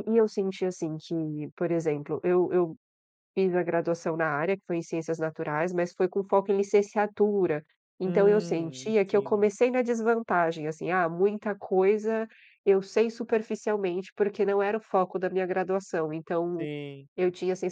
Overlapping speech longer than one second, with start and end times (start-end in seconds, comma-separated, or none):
8.0-9.5